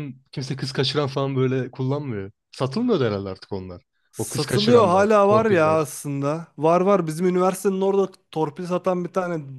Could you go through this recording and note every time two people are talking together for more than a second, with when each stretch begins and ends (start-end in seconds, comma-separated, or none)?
4.1-5.8